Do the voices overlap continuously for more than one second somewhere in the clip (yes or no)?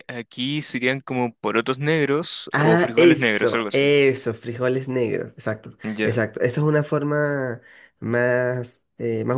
yes